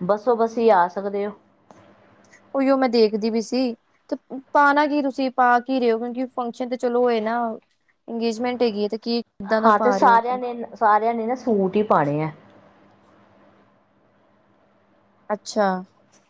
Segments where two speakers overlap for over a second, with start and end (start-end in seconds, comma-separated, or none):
none